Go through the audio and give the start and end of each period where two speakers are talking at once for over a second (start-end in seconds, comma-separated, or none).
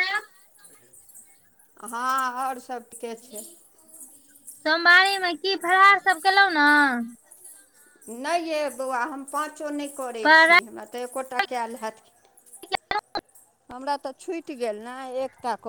none